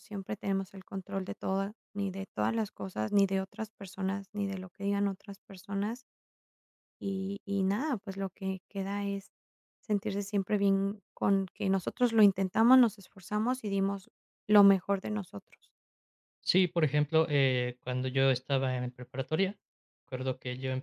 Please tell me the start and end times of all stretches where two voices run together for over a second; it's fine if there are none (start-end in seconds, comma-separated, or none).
none